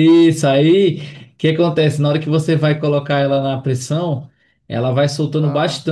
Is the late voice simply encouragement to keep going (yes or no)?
yes